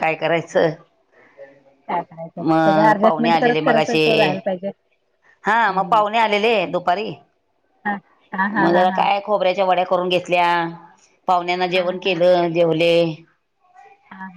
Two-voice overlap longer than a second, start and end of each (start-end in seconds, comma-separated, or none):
2.5-4.0